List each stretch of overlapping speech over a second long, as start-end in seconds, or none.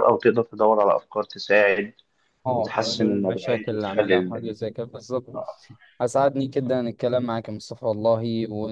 2.5-4.5